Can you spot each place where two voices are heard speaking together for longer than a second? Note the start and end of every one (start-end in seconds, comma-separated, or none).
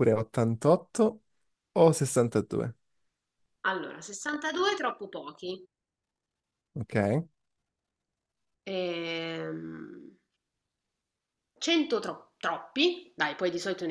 none